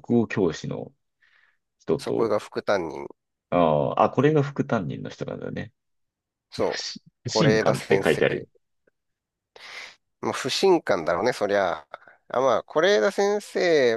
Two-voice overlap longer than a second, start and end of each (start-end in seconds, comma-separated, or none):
6.6-8.2